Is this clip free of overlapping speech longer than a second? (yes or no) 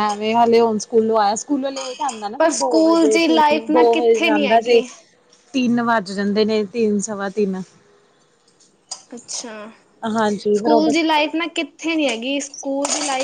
no